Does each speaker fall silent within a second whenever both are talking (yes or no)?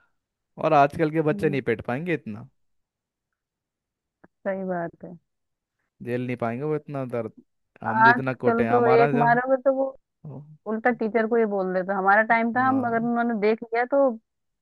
no